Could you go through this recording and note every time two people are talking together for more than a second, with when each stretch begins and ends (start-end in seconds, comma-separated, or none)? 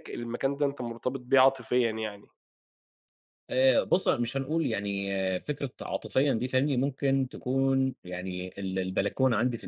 none